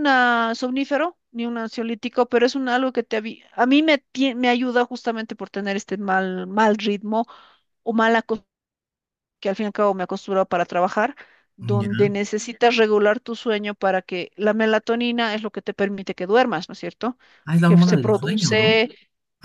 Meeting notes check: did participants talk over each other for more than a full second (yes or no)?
yes